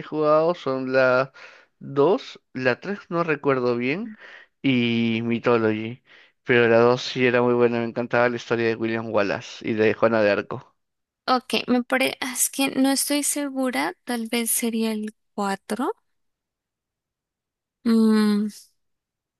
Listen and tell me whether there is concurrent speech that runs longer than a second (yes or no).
no